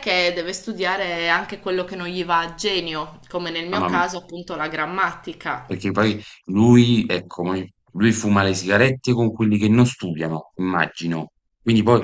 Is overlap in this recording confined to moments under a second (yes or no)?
yes